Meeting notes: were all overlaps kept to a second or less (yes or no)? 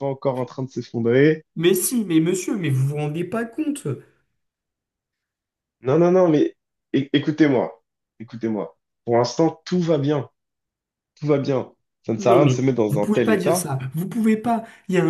no